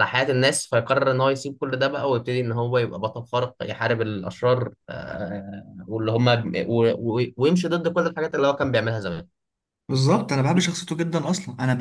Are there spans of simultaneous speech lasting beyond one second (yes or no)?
no